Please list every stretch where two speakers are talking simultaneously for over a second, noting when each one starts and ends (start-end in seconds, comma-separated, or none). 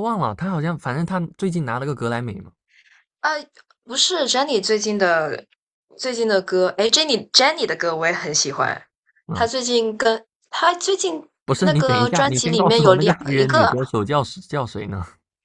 11.6-13.7